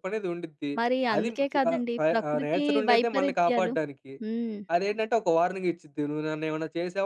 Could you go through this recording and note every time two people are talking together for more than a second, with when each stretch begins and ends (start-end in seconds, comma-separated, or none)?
1.1-3.7